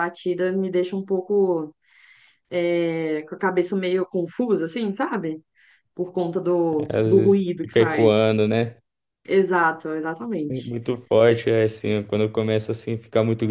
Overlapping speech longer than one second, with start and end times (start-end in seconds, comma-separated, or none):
6.9-8.3